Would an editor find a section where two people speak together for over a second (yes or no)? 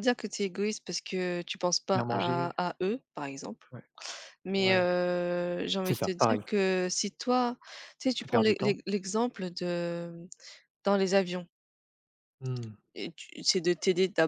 no